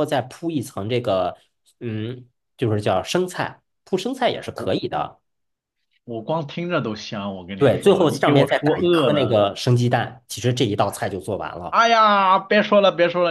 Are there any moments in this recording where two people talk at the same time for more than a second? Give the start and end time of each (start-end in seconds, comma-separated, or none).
7.6-9.4